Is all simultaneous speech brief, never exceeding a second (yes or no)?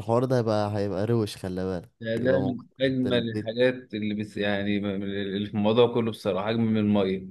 no